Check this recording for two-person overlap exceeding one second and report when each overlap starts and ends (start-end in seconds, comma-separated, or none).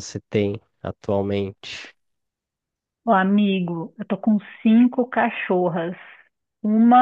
none